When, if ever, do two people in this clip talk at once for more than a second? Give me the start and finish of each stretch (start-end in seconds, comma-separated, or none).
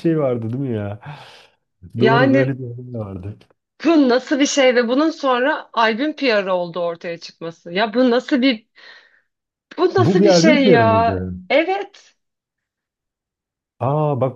10.0-11.3